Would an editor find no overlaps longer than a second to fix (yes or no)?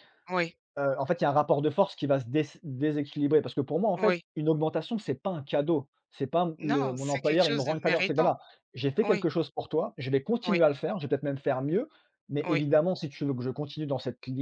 no